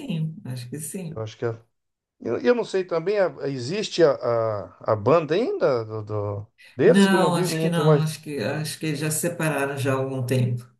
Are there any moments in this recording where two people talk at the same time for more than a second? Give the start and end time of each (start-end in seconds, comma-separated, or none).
6.8-8.2